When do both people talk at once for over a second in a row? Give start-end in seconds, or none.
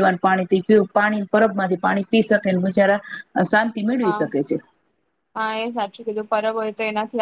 none